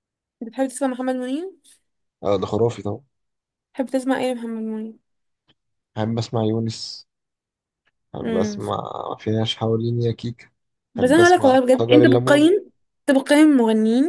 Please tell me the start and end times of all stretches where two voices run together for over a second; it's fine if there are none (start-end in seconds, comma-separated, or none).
11.0-12.5